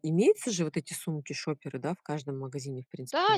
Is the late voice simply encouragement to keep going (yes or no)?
no